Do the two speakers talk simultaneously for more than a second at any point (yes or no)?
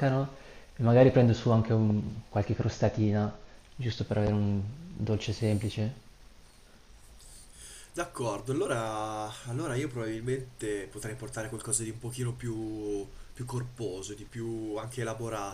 no